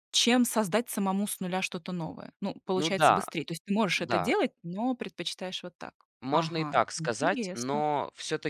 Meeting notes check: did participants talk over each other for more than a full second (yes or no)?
yes